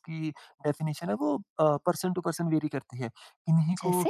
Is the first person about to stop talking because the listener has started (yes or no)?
no